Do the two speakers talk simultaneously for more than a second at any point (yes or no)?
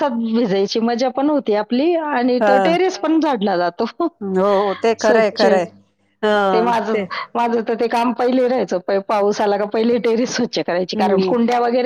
no